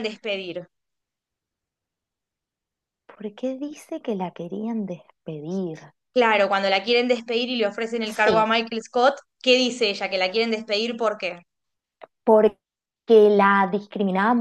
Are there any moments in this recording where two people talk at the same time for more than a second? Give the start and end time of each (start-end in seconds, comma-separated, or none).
none